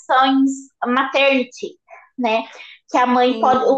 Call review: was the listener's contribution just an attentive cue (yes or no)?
yes